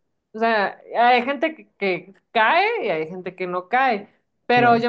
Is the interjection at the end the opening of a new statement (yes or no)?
no